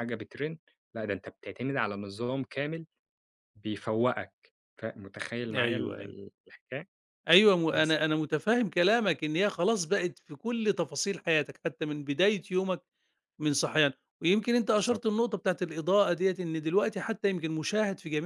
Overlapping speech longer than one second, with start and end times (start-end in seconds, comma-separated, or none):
none